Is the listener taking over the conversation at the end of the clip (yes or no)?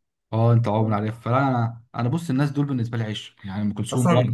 yes